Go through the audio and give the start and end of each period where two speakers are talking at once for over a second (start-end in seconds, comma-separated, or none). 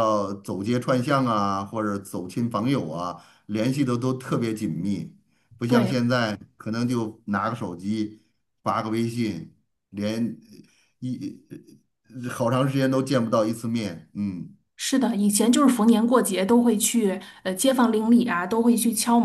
none